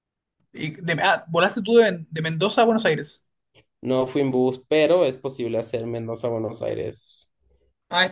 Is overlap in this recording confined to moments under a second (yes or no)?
yes